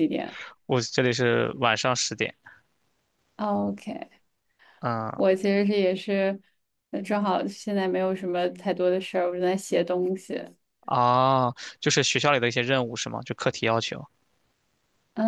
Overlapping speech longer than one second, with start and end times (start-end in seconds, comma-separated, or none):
none